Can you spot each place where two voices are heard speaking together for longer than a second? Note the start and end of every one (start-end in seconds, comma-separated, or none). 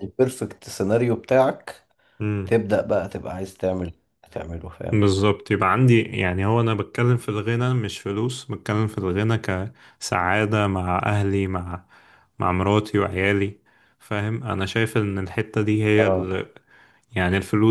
none